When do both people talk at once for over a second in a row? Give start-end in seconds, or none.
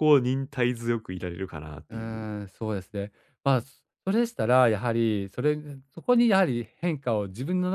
none